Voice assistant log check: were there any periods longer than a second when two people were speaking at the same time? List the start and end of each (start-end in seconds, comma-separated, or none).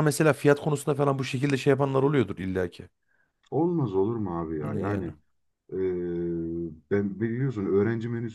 none